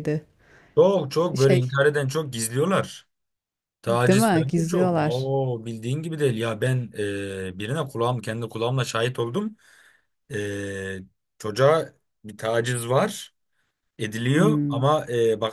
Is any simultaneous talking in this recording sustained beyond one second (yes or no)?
yes